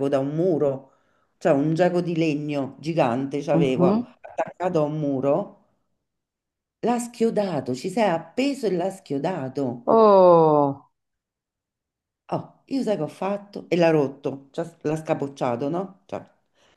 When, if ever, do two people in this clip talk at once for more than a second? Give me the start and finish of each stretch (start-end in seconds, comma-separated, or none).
none